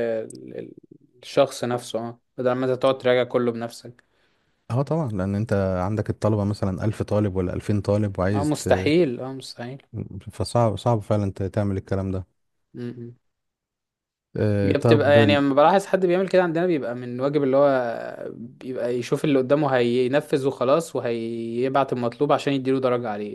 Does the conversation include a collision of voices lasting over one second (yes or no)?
no